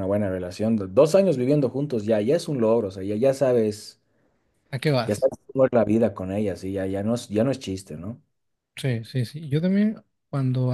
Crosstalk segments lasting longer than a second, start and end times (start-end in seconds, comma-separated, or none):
none